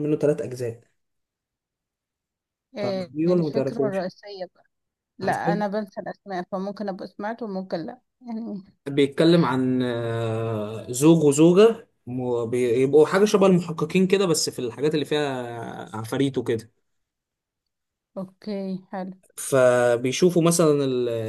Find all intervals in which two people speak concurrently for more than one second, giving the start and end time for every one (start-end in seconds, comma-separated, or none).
2.8-4.1